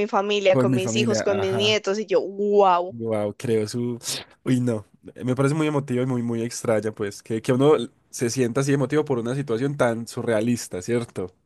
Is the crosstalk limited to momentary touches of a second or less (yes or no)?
no